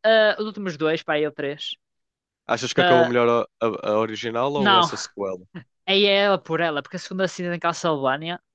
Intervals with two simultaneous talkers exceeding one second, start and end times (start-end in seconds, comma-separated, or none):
none